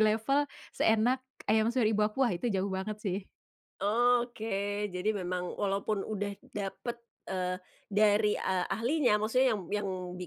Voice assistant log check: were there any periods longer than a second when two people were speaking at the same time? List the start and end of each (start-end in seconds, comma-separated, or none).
none